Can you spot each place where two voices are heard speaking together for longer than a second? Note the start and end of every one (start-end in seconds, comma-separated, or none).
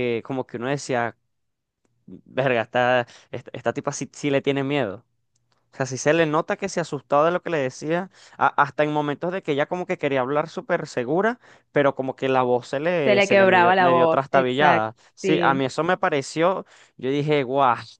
13.0-15.6